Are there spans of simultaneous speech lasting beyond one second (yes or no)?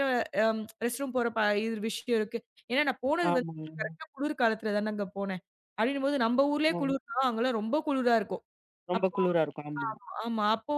no